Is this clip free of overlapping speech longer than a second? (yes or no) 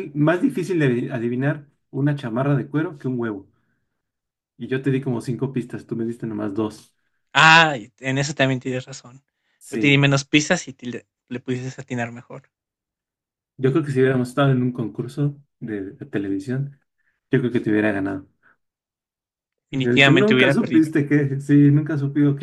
no